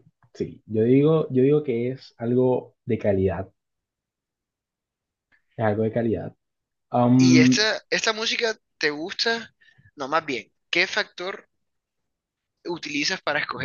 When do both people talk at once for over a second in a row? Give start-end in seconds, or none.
none